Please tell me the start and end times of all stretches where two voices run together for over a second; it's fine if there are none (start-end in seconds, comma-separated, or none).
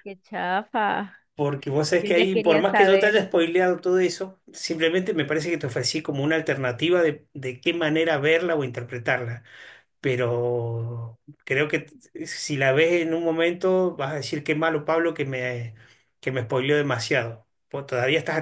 2.0-3.2